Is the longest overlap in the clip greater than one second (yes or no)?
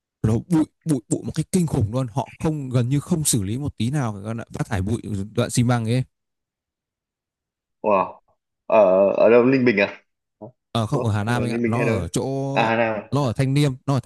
yes